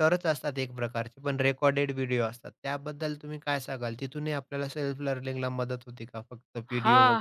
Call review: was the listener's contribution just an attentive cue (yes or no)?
no